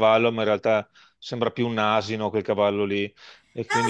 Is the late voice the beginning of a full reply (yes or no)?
yes